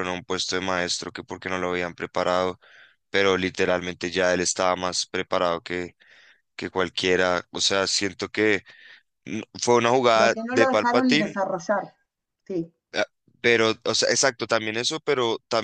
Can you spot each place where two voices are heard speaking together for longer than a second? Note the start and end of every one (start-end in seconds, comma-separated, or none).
10.1-11.3